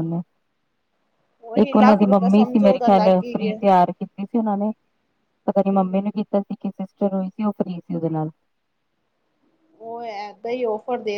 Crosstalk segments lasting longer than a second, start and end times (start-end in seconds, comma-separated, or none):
1.6-3.6